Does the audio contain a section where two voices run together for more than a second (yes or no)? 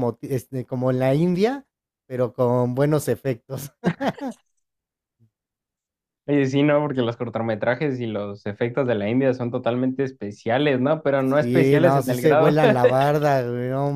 yes